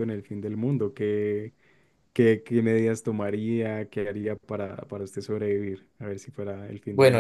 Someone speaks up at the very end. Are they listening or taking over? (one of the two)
taking over